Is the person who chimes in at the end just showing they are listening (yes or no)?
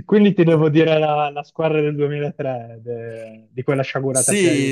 no